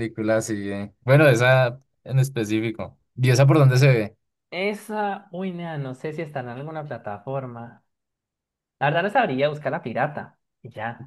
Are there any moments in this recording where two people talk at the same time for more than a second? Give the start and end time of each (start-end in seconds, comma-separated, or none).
none